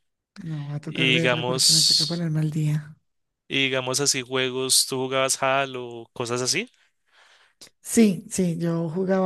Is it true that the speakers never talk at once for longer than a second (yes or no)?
no